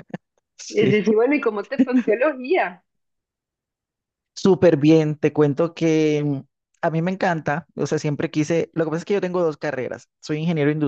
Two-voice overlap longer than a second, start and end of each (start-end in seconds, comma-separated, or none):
none